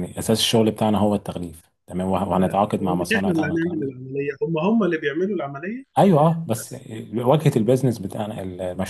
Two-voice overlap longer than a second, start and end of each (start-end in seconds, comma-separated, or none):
2.4-3.9